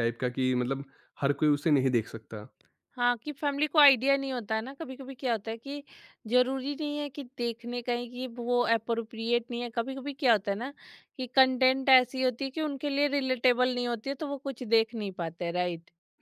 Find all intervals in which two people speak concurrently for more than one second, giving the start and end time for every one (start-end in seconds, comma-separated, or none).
none